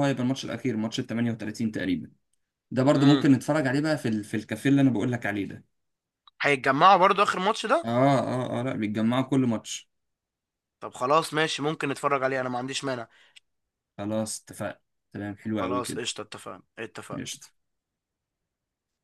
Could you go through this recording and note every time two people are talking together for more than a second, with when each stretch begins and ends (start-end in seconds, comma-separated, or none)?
none